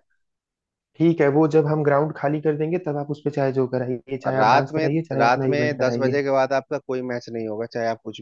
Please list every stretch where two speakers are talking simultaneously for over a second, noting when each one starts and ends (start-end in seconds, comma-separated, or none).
4.3-6.2